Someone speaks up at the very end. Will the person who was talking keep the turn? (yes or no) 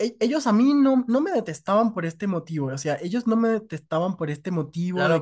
no